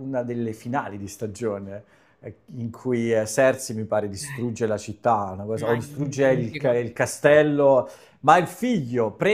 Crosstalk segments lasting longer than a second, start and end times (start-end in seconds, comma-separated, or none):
5.6-6.8